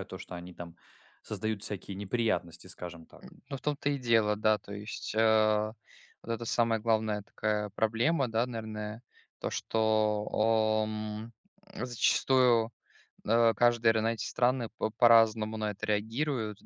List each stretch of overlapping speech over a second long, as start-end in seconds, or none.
none